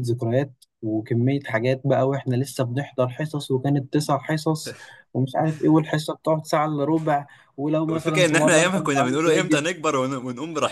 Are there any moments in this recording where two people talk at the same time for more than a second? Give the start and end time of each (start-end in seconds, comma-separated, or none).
7.9-9.6